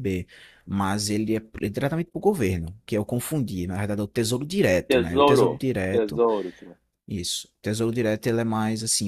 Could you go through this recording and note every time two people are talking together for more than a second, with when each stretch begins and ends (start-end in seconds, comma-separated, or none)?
4.9-6.2